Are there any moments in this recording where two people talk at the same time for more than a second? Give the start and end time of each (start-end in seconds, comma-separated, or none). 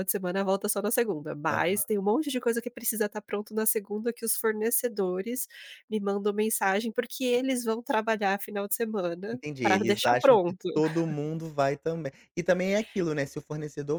9.3-10.7